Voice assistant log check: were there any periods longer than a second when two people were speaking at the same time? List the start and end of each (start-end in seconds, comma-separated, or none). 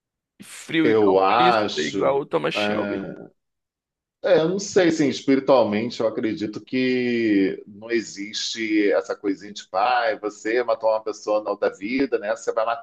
0.8-3.1